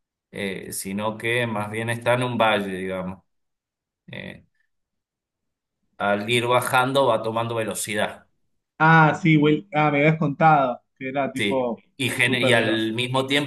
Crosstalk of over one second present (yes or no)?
yes